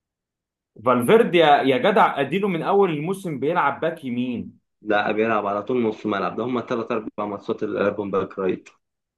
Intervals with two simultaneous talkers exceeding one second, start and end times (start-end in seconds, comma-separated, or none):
none